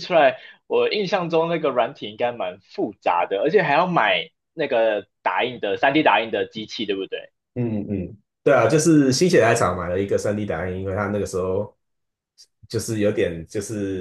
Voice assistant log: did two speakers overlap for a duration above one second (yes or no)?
no